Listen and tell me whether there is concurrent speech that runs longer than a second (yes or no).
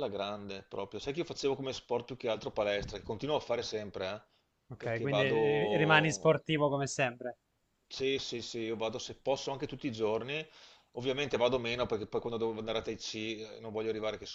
yes